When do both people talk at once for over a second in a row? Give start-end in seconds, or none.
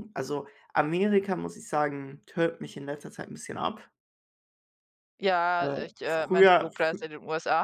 5.6-7.0